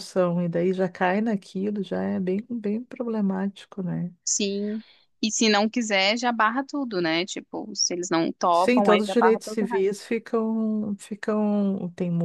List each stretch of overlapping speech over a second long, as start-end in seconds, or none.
8.5-10.0